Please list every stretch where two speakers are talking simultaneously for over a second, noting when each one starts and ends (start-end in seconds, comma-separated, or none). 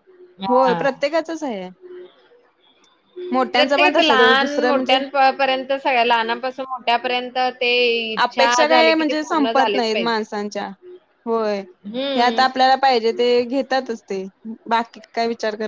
3.6-4.9, 8.2-10.2